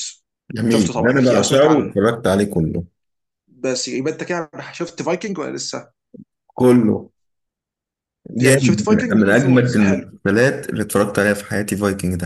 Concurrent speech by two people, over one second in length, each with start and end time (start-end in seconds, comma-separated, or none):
0.7-2.0, 8.4-10.1